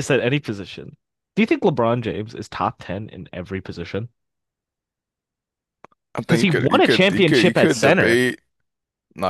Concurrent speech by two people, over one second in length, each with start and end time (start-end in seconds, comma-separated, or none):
6.3-8.2